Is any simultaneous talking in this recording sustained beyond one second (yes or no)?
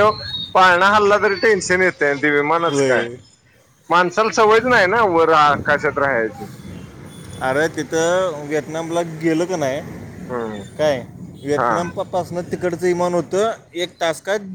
no